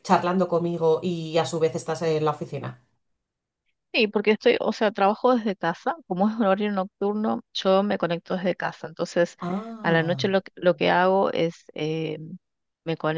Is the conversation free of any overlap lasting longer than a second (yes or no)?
yes